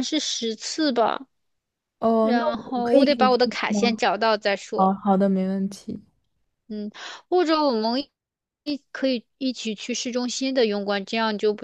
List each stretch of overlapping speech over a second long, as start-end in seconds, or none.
2.2-4.0